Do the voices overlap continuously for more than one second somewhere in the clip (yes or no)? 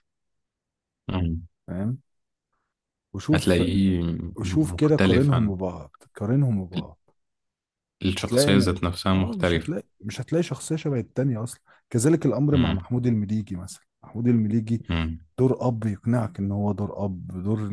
yes